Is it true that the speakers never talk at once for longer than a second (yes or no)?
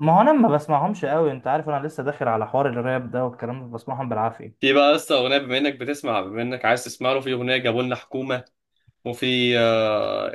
yes